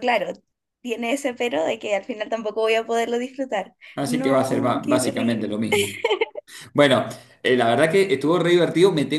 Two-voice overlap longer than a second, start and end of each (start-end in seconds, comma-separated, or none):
3.9-5.6